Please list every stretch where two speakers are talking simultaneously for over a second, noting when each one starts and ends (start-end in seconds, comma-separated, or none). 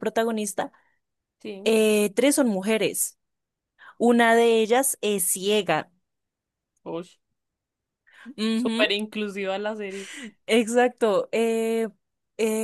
none